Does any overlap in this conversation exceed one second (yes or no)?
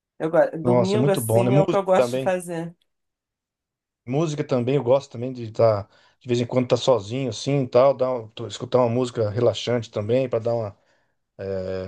yes